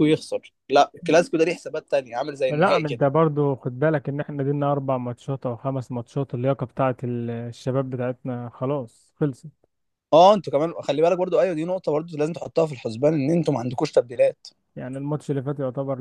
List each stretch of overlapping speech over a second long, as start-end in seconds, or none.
none